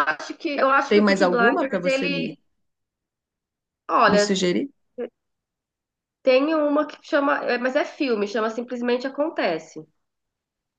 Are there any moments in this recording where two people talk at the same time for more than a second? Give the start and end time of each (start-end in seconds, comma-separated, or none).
0.9-2.4